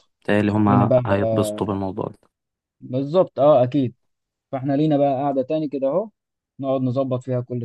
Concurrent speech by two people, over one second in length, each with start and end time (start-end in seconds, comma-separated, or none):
none